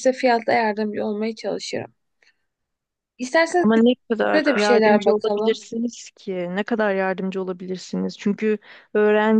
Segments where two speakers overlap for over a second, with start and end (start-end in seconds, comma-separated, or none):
4.3-5.6